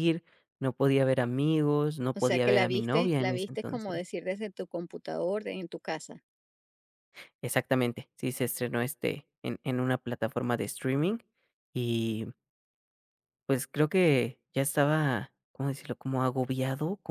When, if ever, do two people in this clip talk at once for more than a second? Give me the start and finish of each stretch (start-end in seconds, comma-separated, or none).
2.1-4.0